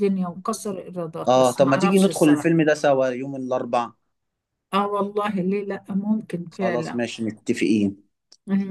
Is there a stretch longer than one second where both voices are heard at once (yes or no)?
yes